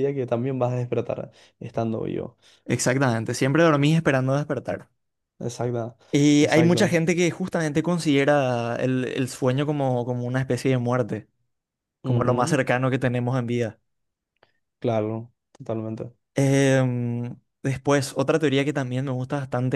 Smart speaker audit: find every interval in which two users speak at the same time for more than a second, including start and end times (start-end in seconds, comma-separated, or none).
none